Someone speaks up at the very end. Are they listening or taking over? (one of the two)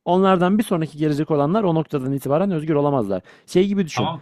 taking over